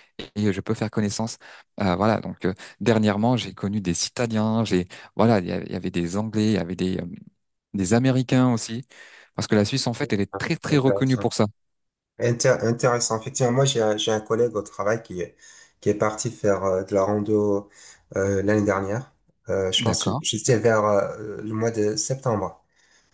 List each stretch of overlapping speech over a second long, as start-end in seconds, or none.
none